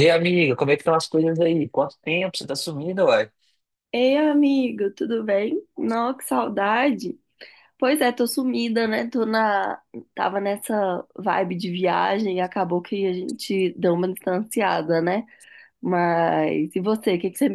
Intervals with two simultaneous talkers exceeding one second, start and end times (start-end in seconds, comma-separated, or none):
none